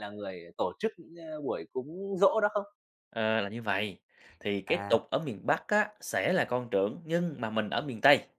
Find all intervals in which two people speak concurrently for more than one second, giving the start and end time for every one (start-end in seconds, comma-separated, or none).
none